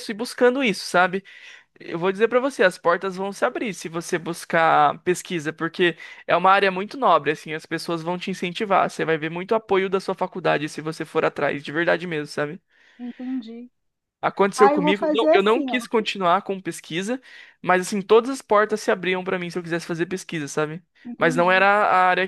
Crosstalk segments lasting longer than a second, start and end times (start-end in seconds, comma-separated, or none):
14.5-15.9